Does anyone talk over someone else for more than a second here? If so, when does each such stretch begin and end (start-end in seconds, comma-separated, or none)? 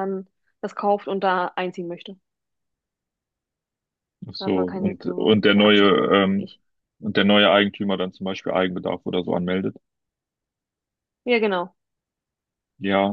4.4-6.5